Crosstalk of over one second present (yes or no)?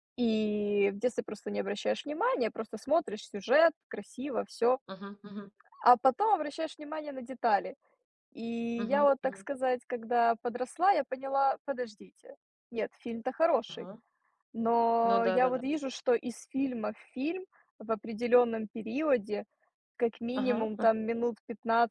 no